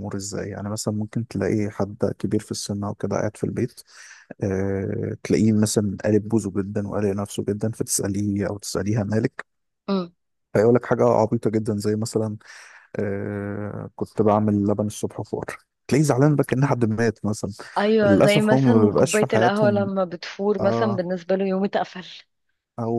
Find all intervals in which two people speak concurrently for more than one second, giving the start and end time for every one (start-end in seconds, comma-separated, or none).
18.0-19.9